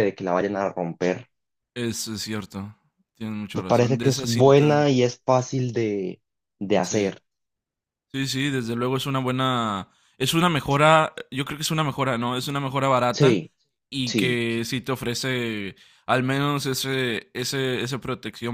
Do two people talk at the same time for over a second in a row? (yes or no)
yes